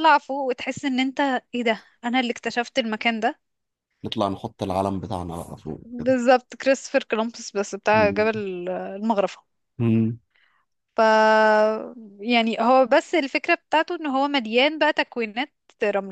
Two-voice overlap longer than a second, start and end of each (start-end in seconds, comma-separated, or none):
none